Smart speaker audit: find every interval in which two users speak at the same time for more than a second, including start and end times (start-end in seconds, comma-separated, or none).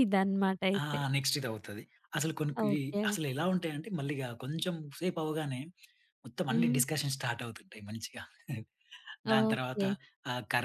none